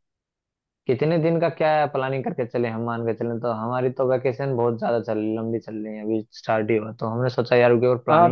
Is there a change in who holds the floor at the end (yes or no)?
yes